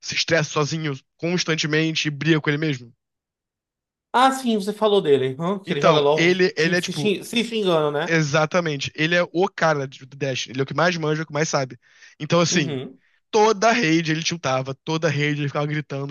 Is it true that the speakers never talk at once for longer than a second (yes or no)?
no